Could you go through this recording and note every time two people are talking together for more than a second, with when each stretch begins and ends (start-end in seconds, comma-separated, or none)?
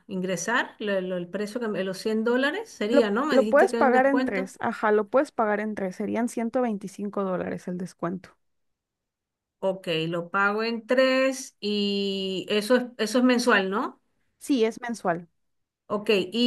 2.9-4.5